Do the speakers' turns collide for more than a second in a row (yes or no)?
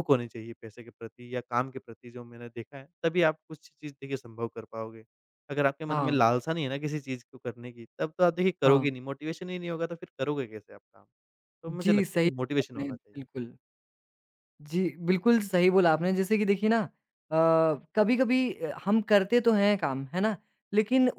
yes